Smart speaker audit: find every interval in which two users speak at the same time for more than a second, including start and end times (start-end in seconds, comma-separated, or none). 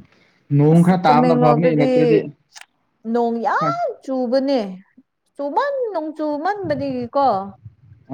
0.7-2.2